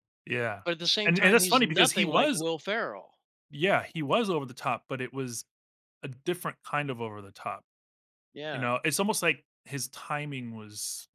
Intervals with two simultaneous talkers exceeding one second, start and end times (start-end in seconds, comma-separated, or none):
1.1-2.4